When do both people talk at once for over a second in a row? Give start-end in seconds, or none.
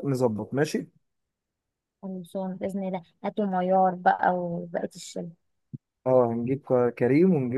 none